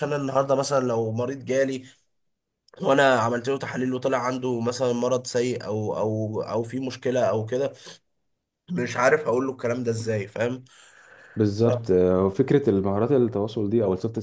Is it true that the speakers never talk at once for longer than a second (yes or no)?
yes